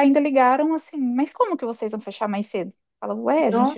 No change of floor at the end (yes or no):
yes